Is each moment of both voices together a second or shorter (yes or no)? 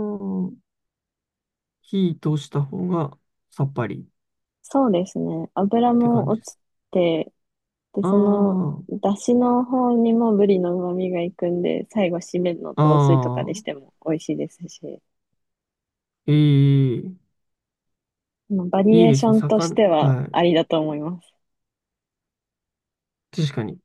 no